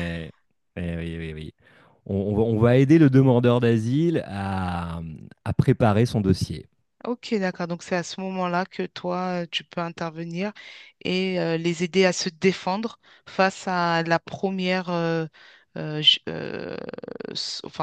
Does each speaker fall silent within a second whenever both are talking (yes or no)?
yes